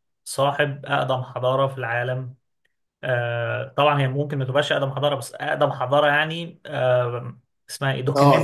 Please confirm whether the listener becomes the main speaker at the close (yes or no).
yes